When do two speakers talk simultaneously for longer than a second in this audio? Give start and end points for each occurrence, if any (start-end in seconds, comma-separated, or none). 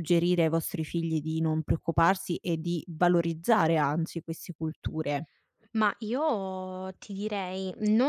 none